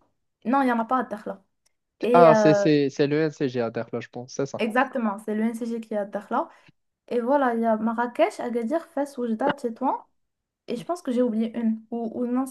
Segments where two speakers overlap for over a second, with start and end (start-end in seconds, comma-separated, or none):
none